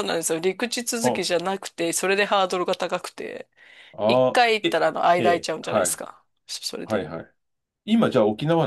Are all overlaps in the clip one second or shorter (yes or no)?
no